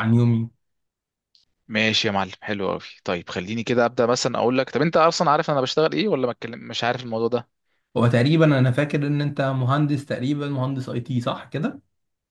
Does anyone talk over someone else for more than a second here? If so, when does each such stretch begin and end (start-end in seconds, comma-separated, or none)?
none